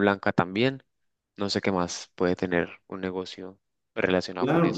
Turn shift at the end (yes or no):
yes